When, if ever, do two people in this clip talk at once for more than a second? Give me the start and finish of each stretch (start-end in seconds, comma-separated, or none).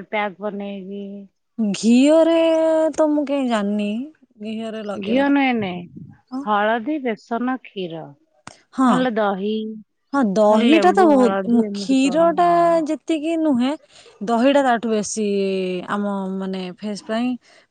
10.4-12.5